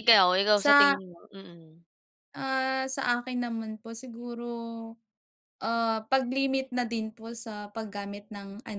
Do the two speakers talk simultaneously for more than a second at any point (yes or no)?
no